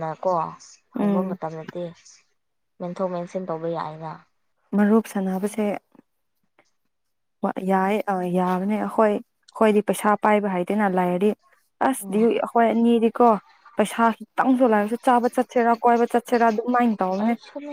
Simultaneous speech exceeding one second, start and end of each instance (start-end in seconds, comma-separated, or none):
none